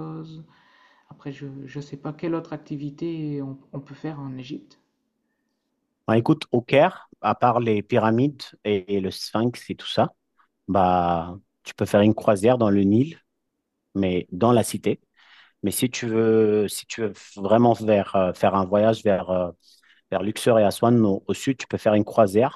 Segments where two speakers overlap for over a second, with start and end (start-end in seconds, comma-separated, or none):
none